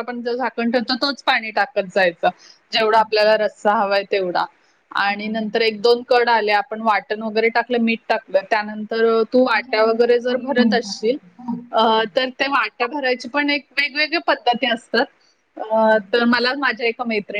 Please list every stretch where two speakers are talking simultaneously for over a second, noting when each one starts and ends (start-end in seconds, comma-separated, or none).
9.5-11.2